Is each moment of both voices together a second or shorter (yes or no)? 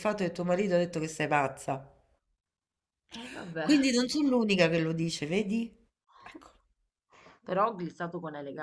yes